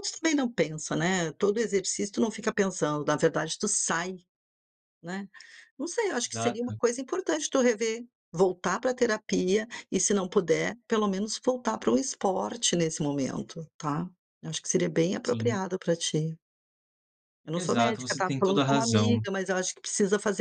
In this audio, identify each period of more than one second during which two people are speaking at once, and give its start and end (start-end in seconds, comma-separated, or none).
17.5-19.3